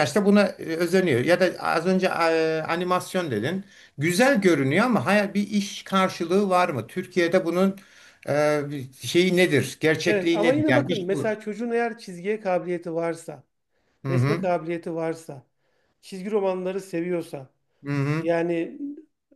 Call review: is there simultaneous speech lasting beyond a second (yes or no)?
yes